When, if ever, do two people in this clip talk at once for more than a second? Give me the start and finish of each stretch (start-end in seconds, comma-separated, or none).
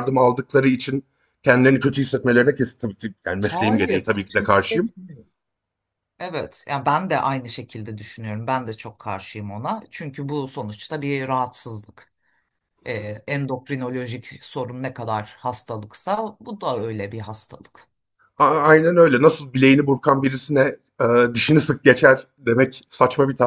3.4-4.9